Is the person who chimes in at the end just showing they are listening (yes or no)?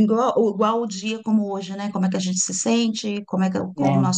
yes